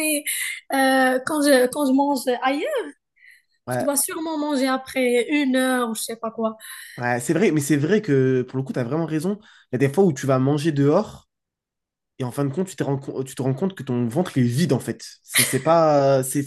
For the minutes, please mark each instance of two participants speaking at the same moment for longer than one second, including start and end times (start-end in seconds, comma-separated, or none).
none